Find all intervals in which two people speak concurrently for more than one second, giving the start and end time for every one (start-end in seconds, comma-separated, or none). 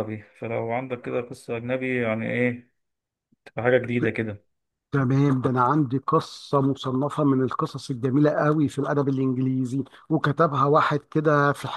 none